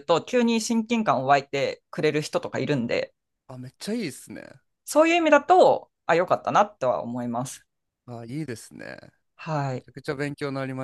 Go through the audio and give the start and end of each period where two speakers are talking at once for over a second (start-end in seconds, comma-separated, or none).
none